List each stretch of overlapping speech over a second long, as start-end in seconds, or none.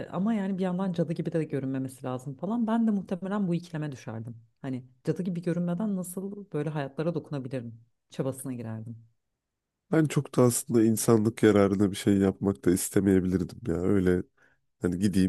none